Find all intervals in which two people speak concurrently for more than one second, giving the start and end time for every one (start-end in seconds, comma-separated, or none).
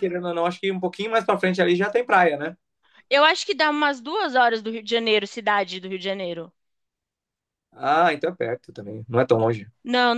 none